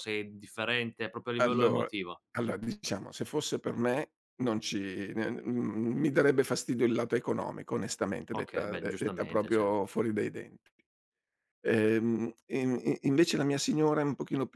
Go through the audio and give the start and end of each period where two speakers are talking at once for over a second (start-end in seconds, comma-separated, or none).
8.3-9.8